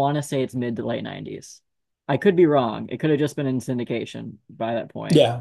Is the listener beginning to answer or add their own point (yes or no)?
yes